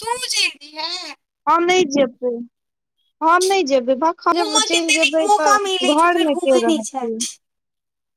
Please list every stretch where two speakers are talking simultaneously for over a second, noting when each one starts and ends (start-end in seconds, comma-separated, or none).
4.4-7.0